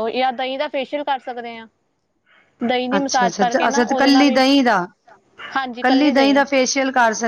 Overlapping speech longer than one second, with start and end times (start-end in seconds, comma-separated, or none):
3.0-4.4